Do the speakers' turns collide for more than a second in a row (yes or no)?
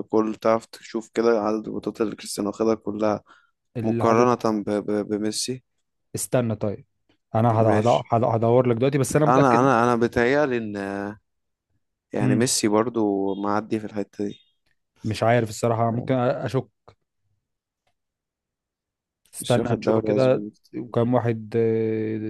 yes